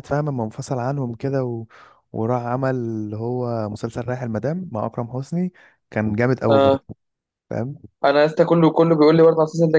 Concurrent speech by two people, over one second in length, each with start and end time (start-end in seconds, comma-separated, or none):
none